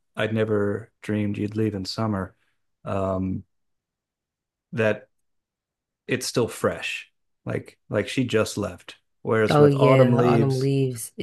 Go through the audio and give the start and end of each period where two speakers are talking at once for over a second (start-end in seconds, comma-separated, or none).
9.5-10.7